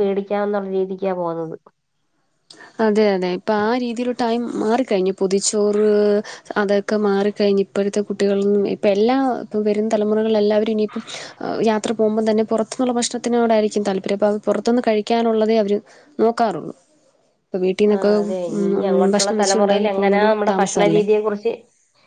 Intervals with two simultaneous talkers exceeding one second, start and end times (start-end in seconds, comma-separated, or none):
19.1-21.0